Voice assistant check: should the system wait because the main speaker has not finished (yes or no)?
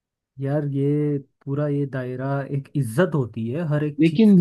no